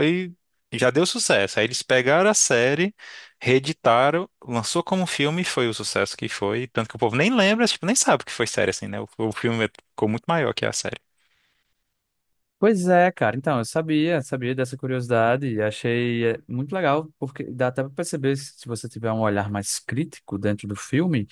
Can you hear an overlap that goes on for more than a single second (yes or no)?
no